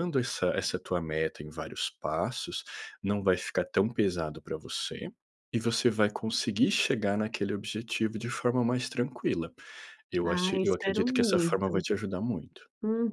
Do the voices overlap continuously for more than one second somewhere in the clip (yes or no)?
yes